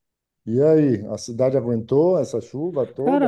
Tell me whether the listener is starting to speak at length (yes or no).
yes